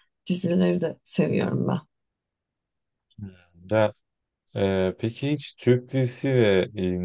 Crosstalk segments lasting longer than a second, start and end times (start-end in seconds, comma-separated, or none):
none